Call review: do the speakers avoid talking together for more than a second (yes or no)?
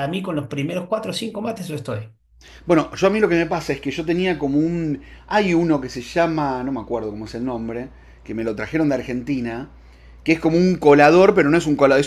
yes